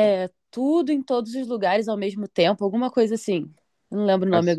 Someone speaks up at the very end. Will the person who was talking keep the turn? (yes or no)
no